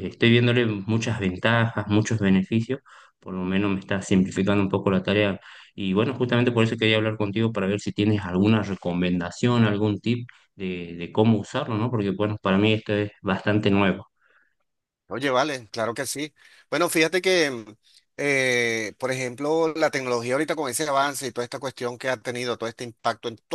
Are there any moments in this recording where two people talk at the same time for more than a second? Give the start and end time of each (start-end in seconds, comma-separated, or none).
none